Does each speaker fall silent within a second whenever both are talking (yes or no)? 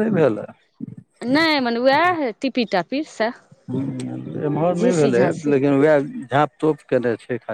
yes